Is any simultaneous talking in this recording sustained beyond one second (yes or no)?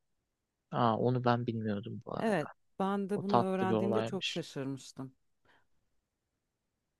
yes